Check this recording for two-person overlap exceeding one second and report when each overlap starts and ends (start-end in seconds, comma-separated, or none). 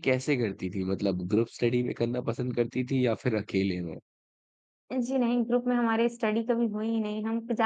none